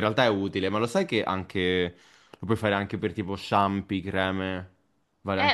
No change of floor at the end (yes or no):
no